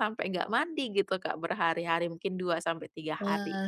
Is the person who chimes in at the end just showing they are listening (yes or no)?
no